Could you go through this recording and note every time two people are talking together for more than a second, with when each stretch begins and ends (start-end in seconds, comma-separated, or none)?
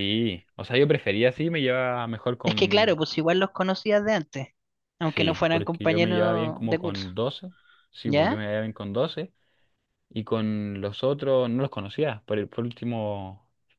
5.0-7.1